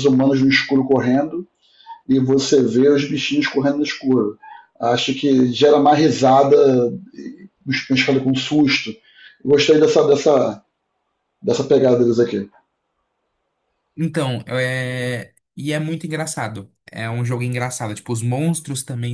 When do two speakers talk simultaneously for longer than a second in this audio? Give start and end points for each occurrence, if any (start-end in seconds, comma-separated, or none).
none